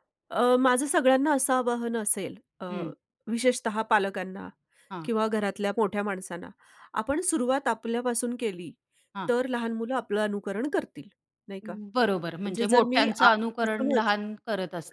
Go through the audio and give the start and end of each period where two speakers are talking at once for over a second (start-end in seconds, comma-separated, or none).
12.2-14.1